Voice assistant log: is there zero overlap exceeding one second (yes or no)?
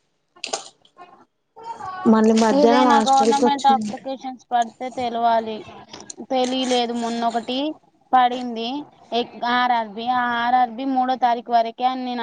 no